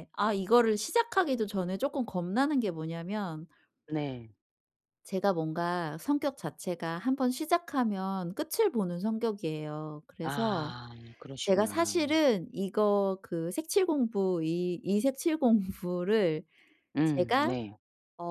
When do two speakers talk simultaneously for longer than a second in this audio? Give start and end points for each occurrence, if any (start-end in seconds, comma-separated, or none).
none